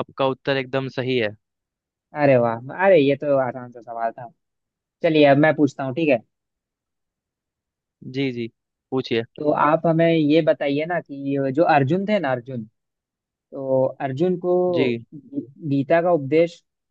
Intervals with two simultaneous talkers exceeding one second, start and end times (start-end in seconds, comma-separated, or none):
none